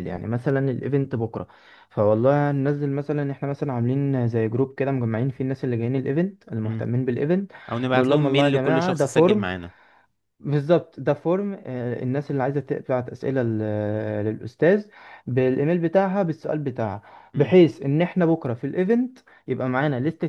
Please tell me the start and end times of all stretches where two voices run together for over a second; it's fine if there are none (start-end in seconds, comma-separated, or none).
8.0-9.4